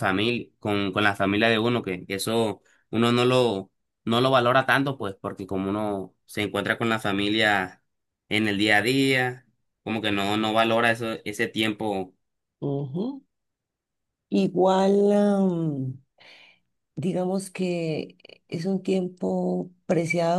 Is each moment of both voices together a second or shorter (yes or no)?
yes